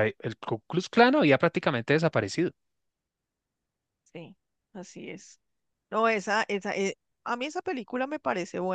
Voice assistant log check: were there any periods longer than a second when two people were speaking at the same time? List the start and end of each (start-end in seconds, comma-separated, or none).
none